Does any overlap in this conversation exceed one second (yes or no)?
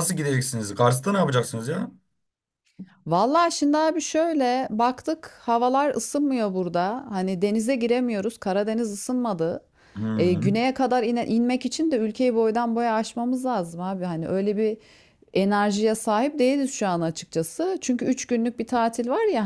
no